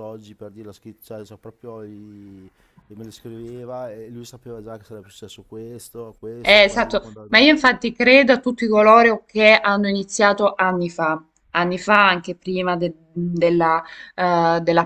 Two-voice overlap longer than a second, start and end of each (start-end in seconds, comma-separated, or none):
6.4-7.7